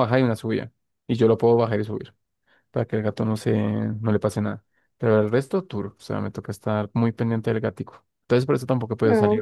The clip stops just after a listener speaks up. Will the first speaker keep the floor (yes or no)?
no